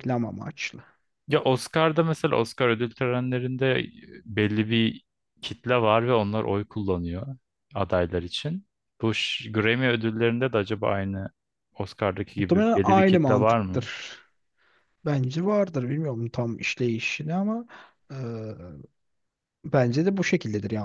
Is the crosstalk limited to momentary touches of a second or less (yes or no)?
no